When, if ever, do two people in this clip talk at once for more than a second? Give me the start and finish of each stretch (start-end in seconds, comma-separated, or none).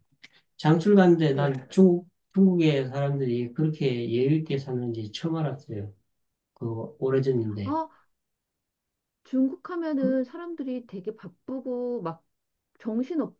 none